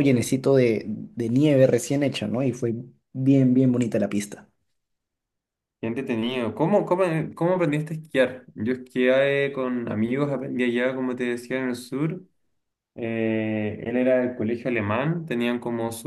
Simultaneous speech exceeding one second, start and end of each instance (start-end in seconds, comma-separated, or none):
none